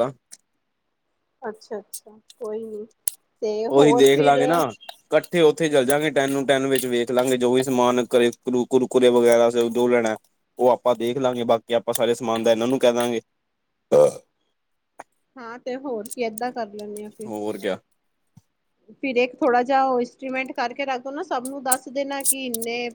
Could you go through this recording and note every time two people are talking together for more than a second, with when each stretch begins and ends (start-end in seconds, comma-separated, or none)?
none